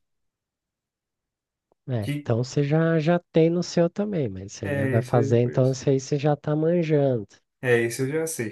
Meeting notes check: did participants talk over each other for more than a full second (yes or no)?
yes